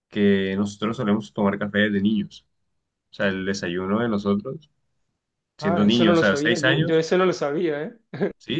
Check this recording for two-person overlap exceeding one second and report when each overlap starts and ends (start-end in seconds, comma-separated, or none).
5.6-7.0